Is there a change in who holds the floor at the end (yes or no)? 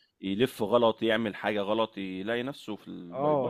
yes